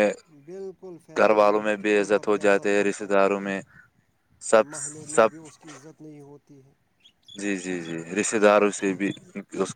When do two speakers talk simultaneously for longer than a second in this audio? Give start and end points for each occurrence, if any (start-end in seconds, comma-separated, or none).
1.2-3.2